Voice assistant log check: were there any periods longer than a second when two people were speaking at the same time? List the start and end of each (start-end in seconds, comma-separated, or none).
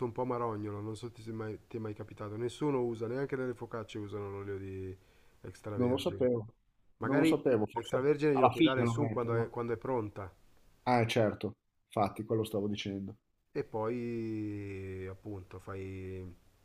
7.0-9.5